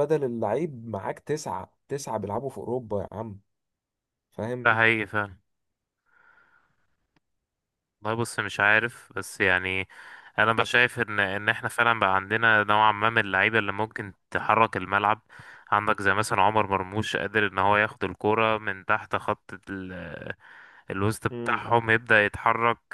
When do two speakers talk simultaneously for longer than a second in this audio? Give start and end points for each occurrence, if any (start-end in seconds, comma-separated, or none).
none